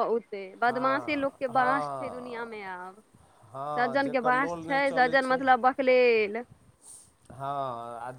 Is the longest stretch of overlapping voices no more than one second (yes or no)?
no